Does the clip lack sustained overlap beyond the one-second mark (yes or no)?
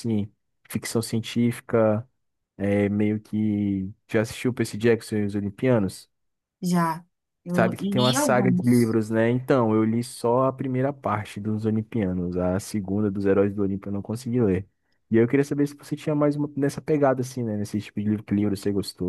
no